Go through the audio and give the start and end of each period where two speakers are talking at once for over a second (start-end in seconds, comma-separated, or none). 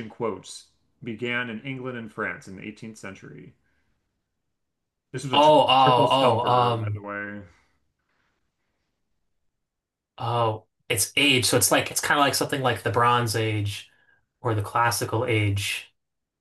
5.3-7.0